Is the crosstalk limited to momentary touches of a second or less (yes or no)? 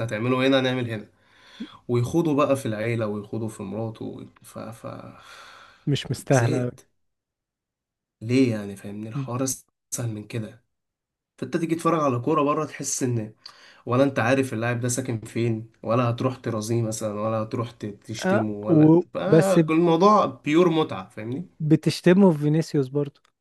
no